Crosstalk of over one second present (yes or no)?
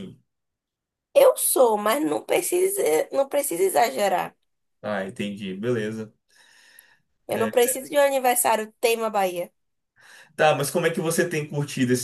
no